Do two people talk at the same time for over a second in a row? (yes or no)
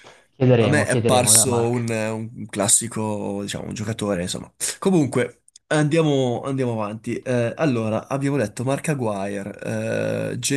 yes